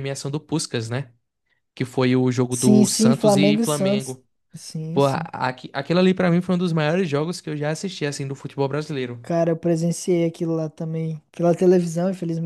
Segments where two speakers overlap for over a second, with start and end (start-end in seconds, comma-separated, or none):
2.5-4.2